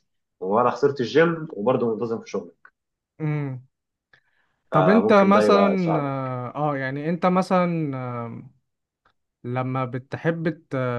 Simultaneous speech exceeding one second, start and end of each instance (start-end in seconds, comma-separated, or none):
4.7-6.3